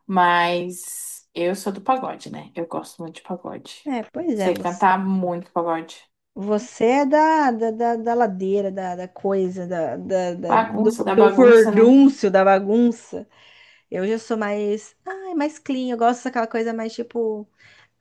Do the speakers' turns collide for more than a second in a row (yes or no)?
yes